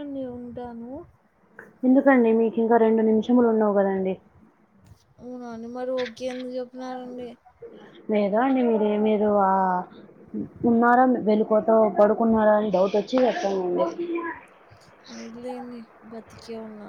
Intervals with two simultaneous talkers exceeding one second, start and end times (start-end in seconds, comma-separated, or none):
none